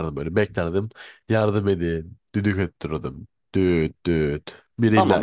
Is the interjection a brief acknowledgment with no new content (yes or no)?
no